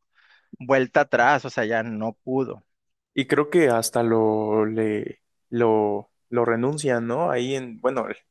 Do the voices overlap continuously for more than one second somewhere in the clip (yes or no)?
no